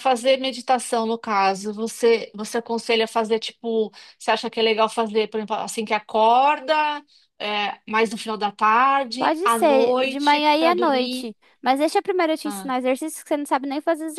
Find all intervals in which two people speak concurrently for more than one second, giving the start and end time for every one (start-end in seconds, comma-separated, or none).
9.2-11.3